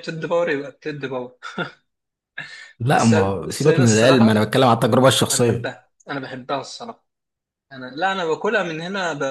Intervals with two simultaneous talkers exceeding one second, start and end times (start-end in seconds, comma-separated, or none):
2.9-4.5